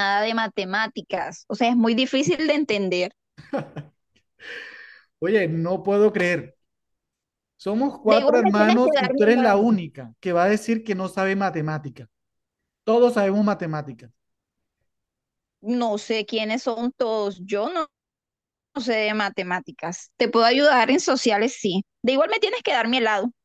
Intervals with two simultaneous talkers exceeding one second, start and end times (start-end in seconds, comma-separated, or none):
8.1-9.7